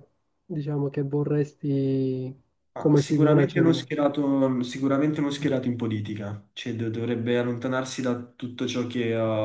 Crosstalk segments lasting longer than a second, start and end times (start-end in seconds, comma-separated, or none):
2.8-4.0